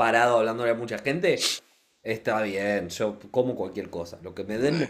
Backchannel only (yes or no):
yes